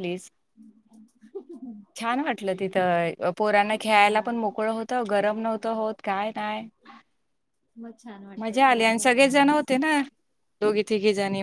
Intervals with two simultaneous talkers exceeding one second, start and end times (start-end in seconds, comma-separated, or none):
8.4-9.7